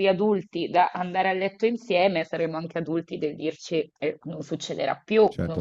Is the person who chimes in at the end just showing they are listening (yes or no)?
no